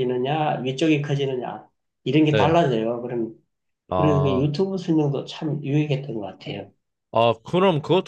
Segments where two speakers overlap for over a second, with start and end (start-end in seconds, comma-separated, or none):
none